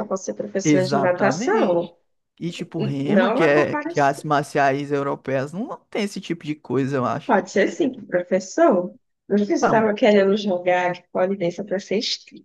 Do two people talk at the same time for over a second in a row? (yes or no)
yes